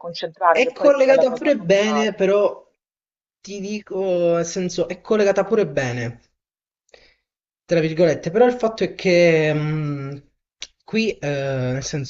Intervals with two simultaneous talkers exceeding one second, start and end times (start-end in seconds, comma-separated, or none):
0.5-2.2